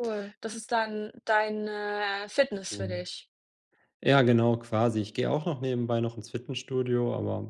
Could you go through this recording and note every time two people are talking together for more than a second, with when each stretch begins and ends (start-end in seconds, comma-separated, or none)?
none